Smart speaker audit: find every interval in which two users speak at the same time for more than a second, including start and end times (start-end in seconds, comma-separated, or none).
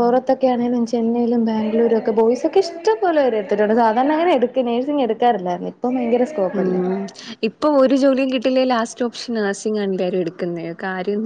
none